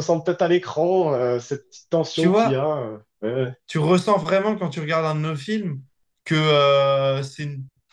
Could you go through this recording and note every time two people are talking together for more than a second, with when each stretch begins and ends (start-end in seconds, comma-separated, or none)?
none